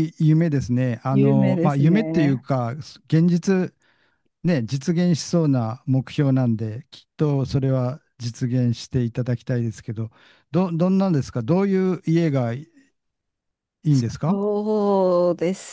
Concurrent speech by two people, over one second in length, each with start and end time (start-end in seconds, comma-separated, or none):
1.1-2.4